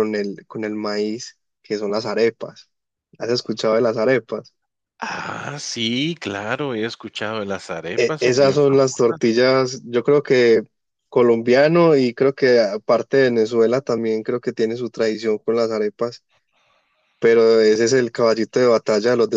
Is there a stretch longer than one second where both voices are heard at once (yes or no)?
yes